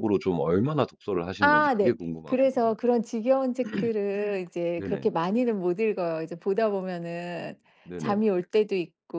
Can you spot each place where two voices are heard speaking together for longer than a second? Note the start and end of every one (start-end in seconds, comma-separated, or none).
1.4-2.9